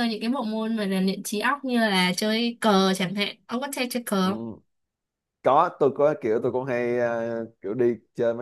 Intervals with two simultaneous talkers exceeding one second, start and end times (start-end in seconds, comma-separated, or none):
none